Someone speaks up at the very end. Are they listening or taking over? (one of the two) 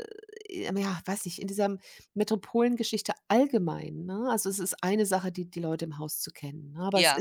listening